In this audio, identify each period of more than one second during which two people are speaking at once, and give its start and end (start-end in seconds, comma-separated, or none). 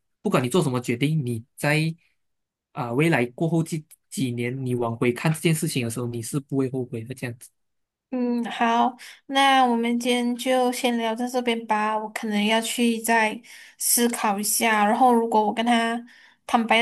none